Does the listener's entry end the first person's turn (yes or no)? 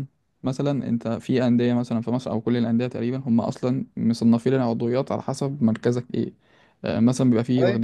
no